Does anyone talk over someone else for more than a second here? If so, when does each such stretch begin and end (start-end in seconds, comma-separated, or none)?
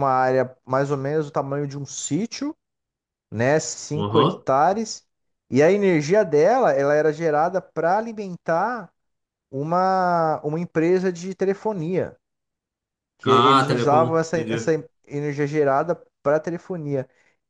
13.2-14.7